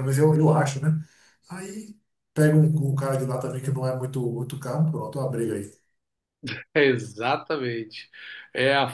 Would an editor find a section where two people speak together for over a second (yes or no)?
no